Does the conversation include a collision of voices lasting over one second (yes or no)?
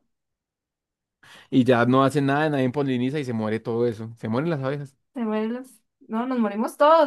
no